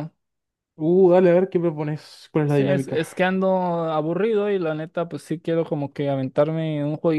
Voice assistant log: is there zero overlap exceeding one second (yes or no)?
yes